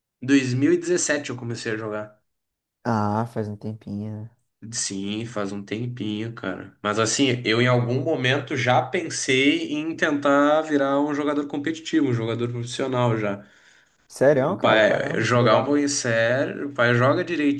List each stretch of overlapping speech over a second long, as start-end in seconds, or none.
14.3-15.7